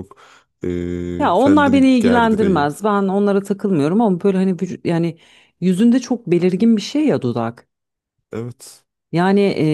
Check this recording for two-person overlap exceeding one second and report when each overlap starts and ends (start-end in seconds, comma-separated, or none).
1.2-2.7